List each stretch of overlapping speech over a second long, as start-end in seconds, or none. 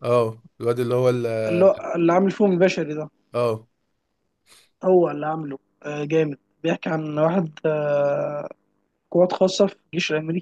none